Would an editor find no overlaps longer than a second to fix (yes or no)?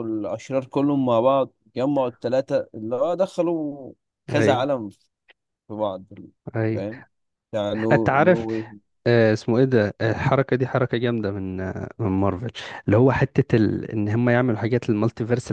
yes